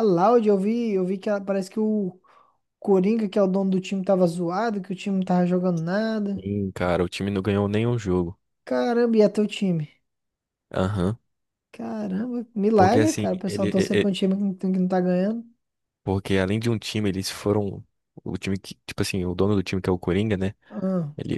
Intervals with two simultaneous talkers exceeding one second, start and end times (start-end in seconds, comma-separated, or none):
12.8-14.1